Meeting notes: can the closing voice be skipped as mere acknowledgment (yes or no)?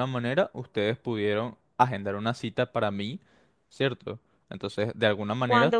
no